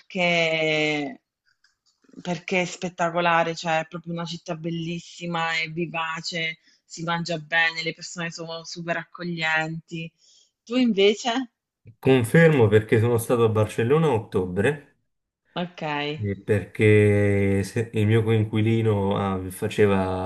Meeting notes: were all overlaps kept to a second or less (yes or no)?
yes